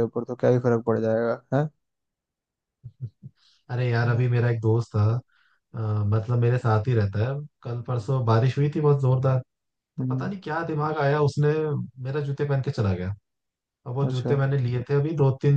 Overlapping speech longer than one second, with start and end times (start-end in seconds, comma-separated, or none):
none